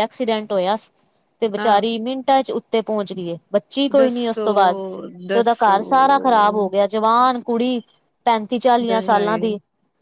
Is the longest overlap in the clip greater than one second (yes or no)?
no